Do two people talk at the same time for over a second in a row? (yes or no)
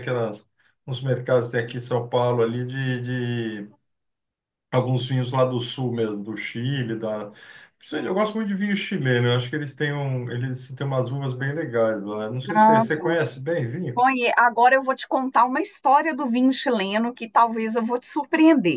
no